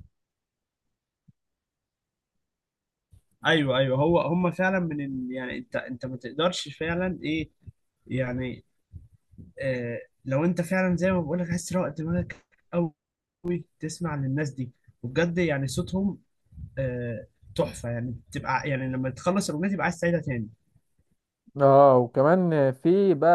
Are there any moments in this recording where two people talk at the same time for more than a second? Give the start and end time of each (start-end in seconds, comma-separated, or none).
none